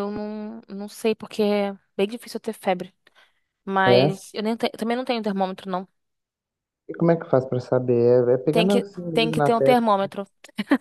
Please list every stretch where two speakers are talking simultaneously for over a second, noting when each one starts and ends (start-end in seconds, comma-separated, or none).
8.5-9.8